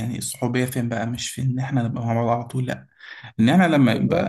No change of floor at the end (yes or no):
yes